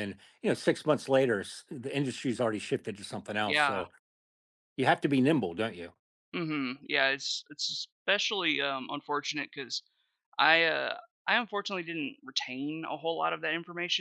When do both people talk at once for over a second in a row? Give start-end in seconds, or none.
none